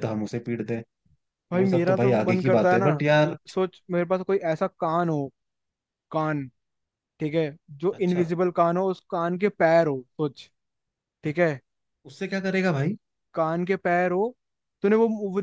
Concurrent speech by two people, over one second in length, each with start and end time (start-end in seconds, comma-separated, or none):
1.5-2.9